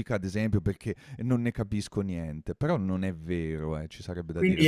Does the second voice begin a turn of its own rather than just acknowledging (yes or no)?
yes